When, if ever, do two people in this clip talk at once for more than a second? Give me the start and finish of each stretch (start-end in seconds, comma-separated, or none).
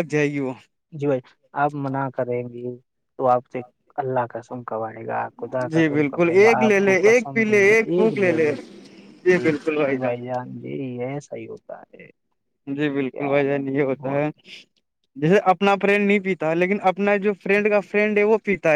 5.7-8.2